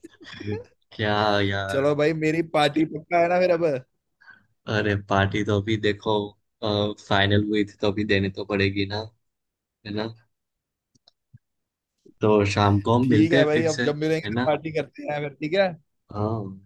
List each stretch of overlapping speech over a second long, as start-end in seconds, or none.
13.0-14.5